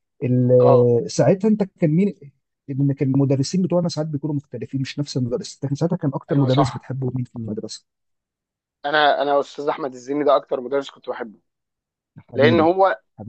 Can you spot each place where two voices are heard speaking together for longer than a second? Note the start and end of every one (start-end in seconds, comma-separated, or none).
none